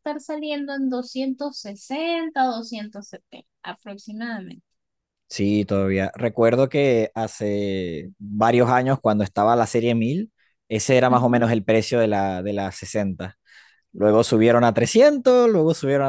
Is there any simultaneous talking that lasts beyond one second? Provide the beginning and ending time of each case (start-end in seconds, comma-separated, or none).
none